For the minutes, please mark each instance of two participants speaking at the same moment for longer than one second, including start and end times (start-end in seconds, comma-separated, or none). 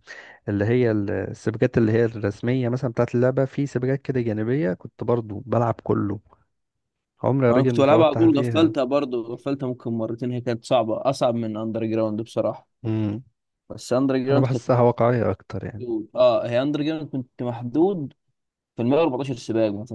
7.5-8.7